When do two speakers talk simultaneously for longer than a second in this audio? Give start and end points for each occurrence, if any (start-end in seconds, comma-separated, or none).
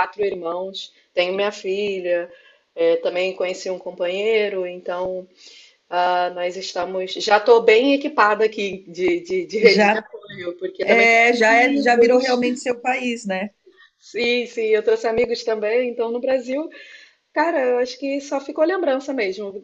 10.8-12.4